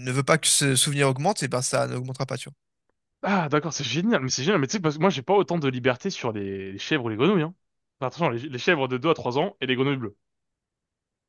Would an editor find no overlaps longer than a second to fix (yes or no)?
yes